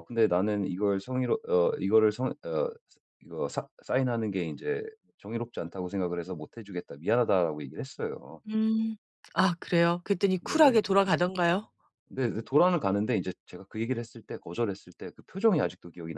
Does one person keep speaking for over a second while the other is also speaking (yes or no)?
no